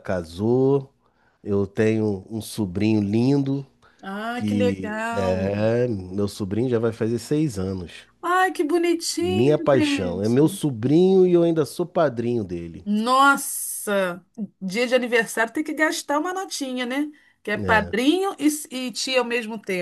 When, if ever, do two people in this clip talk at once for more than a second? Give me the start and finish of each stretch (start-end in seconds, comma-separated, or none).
4.3-5.6, 9.2-10.6